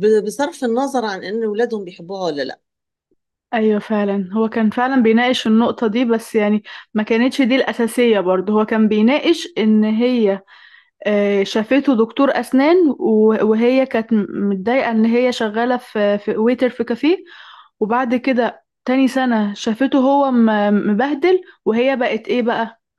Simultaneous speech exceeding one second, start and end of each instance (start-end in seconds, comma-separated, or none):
none